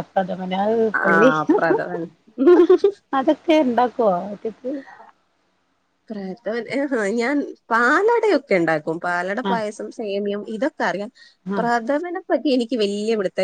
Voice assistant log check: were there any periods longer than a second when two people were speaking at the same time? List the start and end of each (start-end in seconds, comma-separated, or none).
none